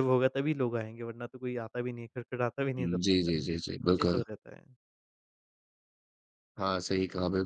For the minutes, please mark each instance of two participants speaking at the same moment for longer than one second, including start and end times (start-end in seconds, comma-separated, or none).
none